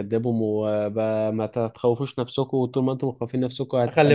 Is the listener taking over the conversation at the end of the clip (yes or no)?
yes